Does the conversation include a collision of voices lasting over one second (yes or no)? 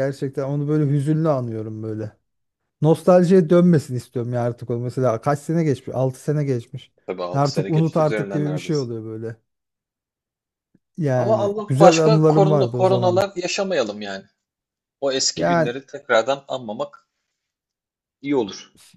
yes